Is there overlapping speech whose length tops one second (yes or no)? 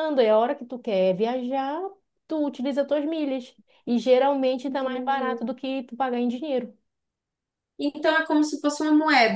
no